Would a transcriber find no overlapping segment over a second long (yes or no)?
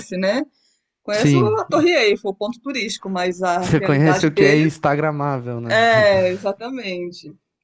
no